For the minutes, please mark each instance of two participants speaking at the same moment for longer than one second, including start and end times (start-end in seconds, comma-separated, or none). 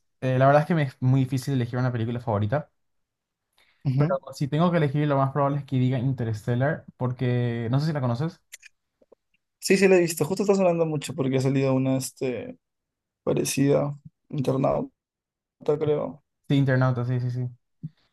none